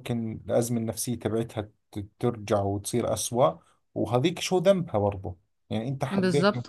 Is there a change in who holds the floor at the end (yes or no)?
no